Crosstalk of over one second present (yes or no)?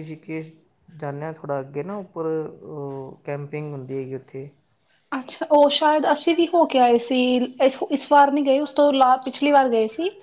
no